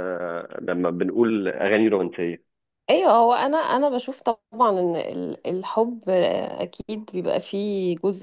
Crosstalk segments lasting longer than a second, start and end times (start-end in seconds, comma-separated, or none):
none